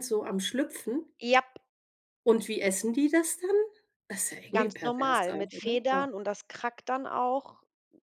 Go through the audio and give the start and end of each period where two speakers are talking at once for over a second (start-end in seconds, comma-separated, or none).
4.5-6.1